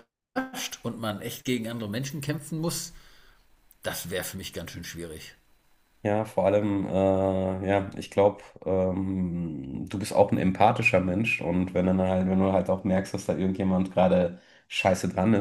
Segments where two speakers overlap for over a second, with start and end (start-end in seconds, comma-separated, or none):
none